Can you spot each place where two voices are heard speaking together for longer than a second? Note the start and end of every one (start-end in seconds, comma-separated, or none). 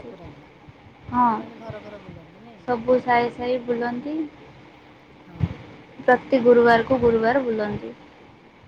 none